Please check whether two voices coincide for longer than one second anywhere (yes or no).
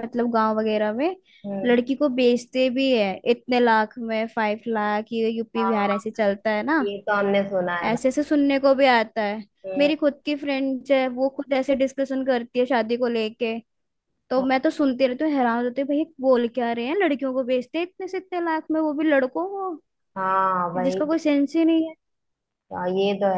no